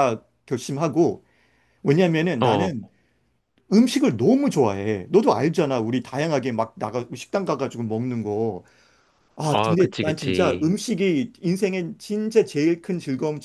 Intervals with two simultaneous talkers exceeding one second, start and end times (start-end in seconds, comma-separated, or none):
9.5-10.8